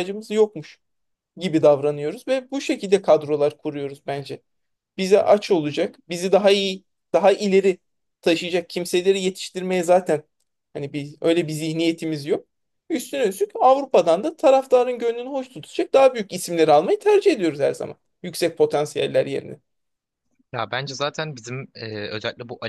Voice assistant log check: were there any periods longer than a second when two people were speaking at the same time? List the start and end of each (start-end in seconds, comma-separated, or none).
none